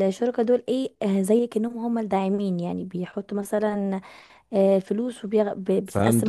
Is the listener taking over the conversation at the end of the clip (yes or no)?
yes